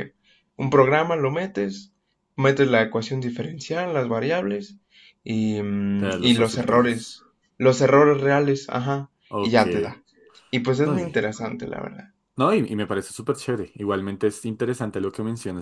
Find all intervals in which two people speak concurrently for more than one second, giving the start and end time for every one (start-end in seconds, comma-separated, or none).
6.0-7.2